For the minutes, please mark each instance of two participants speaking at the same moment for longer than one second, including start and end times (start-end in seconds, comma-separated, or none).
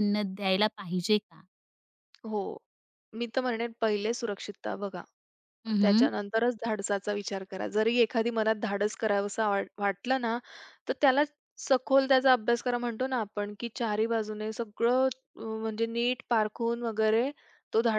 none